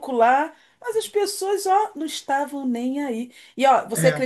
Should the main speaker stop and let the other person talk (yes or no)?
no